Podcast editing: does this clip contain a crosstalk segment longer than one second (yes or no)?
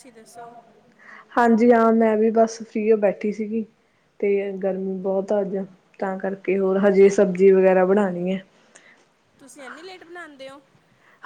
no